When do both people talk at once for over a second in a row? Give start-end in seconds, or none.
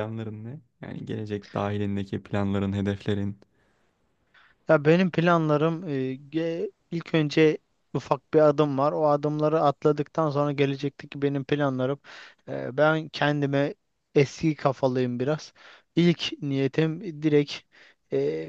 none